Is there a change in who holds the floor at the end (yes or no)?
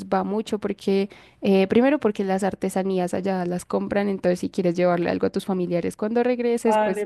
yes